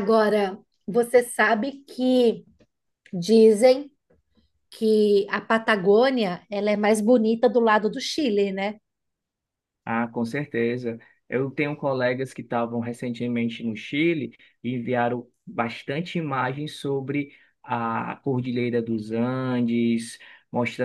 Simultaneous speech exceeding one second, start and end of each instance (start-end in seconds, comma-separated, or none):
none